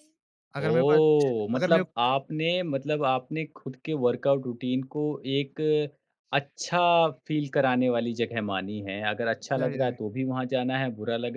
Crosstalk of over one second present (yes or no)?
yes